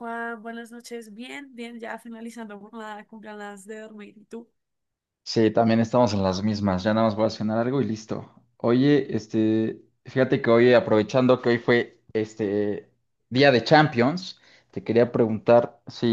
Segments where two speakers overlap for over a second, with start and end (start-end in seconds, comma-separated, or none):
none